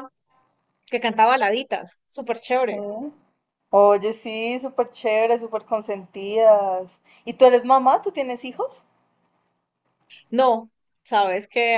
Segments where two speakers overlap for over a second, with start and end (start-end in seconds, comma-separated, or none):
none